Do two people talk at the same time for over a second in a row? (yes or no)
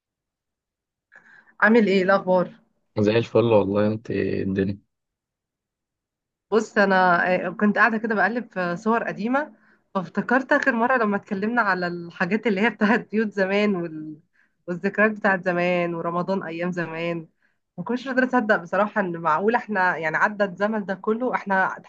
no